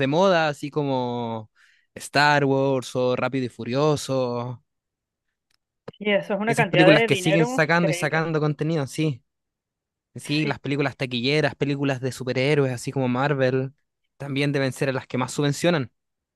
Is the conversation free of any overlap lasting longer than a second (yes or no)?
no